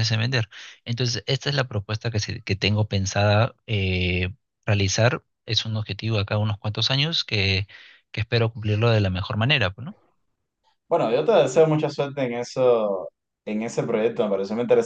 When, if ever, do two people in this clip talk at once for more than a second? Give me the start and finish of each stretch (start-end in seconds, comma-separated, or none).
none